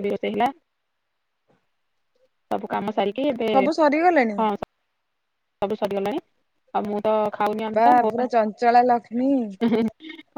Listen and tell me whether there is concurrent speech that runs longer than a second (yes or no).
yes